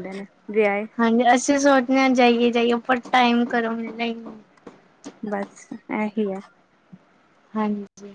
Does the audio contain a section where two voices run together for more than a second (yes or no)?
no